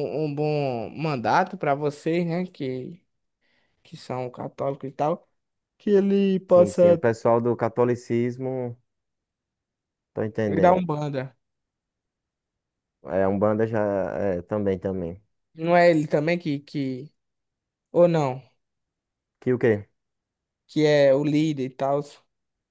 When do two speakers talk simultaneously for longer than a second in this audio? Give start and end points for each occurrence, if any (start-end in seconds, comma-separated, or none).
none